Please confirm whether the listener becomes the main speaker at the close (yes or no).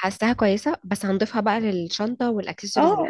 yes